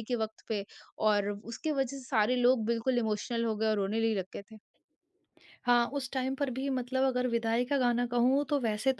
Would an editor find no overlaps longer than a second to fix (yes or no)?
yes